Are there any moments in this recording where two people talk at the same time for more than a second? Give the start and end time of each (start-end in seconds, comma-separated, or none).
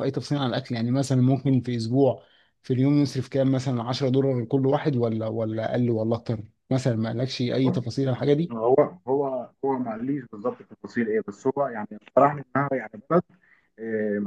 none